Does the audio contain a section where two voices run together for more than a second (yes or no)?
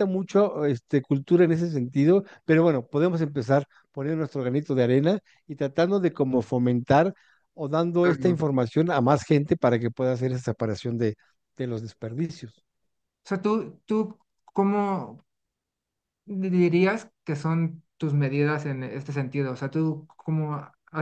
no